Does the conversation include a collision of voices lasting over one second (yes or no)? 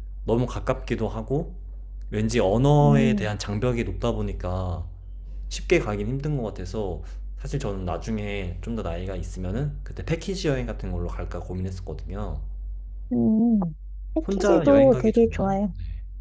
yes